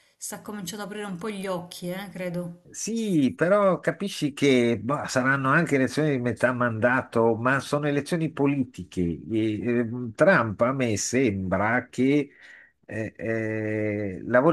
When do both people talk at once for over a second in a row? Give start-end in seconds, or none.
none